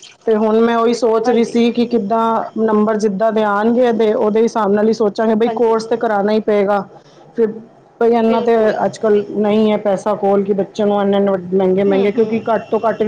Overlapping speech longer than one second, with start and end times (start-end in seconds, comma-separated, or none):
none